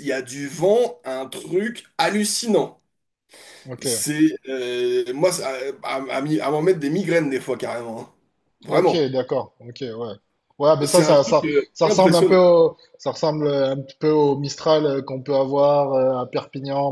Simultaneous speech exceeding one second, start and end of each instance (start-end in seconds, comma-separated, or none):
10.8-12.3